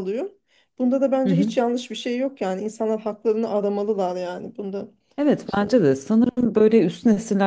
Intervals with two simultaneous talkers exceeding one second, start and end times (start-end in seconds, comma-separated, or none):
none